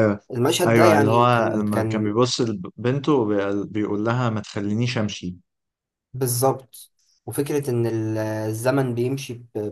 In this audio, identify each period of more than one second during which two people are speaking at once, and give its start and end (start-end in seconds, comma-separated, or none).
0.7-2.1